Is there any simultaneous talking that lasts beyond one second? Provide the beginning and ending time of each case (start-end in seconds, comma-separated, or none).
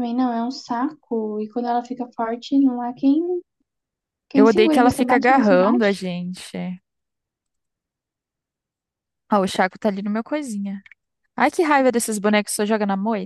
4.3-5.9